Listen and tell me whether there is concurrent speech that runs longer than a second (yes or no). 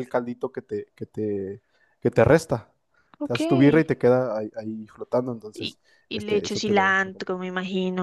yes